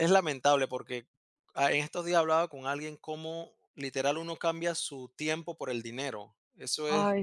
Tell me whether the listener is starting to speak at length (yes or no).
no